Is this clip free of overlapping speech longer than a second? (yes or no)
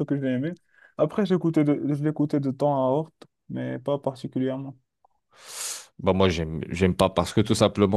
yes